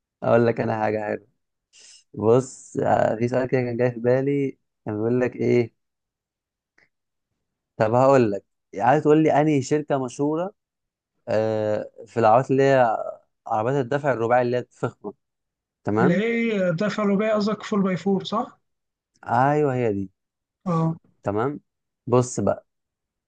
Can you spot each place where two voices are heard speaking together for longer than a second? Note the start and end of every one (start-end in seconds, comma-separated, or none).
none